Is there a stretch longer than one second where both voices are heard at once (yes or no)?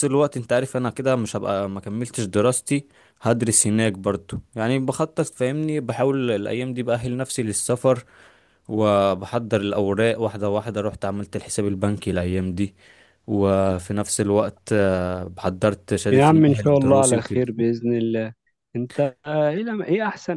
yes